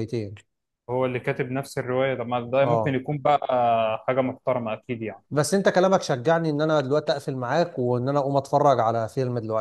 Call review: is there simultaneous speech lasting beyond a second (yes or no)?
no